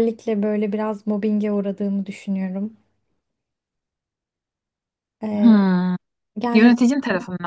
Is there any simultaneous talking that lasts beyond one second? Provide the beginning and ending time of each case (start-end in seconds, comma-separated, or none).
none